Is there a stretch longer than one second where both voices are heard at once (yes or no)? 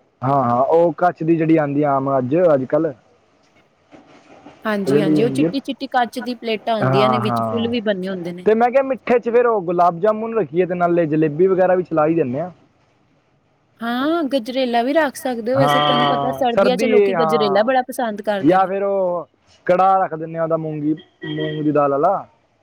yes